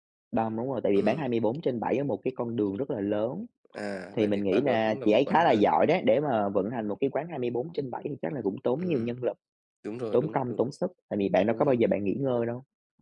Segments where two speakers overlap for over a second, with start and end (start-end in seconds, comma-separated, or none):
4.2-5.7